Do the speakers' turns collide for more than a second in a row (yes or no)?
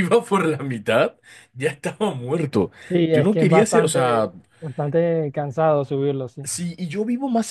yes